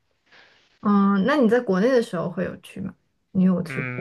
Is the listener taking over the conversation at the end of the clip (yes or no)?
yes